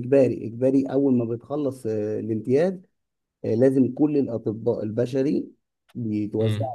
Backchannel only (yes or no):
yes